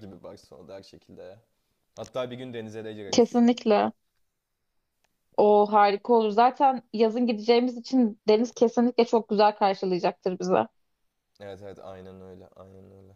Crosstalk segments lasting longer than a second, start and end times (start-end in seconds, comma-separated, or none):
none